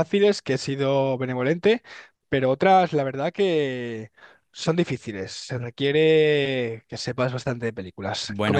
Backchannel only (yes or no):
no